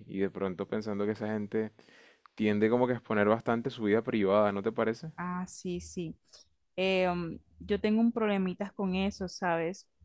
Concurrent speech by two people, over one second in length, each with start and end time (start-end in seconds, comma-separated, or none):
none